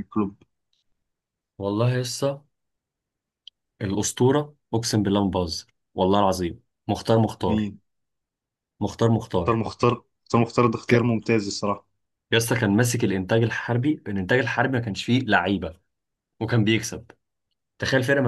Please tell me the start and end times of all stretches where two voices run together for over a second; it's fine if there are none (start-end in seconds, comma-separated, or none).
none